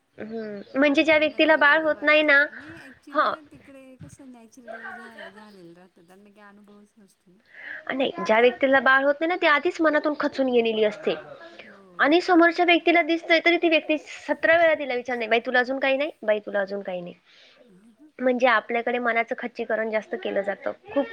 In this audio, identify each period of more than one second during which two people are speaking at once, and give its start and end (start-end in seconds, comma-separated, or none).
1.1-2.4